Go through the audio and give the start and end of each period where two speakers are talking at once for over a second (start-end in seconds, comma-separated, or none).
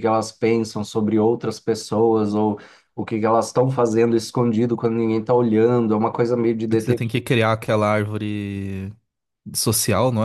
none